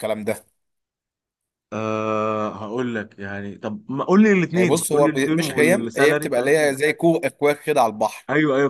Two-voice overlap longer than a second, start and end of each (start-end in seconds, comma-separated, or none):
4.5-6.8